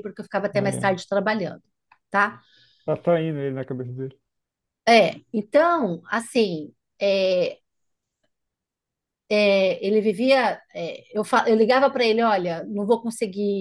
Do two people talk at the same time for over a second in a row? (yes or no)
no